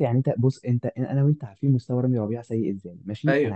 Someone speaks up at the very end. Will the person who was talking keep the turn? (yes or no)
yes